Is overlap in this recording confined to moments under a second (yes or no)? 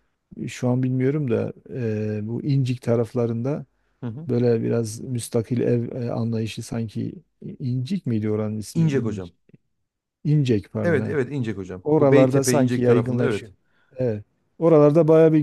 no